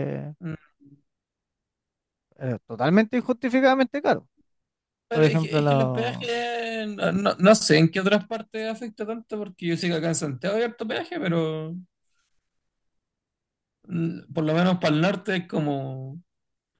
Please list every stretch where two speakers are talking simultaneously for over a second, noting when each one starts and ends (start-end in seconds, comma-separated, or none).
5.1-6.3